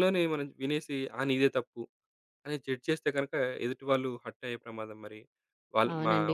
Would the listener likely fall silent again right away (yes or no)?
no